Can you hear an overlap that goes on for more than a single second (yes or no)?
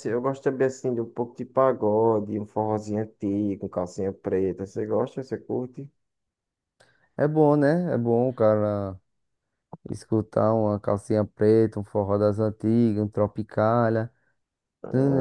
no